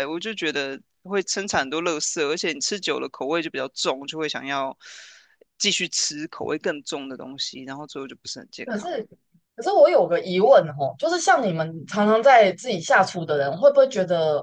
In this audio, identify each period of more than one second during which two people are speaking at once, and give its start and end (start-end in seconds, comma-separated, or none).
none